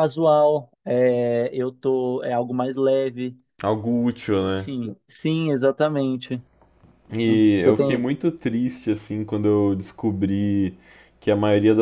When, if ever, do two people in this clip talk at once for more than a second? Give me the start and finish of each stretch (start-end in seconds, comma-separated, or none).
none